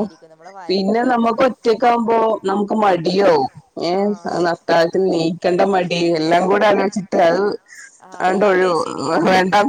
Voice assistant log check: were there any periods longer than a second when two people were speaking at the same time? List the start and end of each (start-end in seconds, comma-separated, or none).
none